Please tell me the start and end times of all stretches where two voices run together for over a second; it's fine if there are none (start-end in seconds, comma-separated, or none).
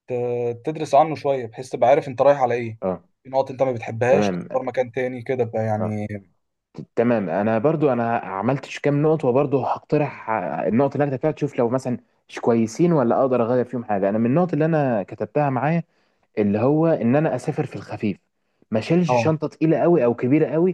none